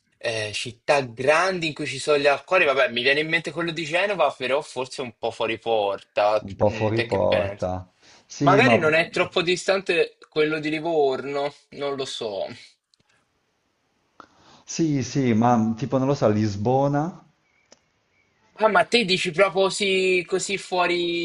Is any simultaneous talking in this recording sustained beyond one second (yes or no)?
yes